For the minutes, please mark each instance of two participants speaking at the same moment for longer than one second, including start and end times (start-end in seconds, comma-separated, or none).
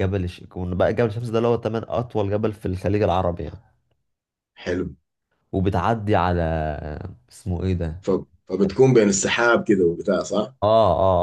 none